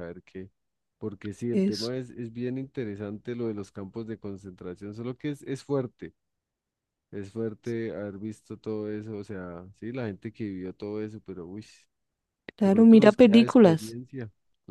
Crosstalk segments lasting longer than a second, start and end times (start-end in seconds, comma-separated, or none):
12.6-14.0